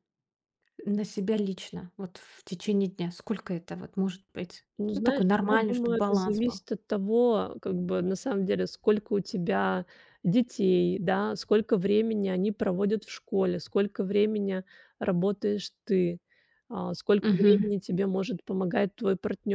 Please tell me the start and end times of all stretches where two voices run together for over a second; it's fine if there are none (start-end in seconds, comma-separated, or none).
4.8-6.6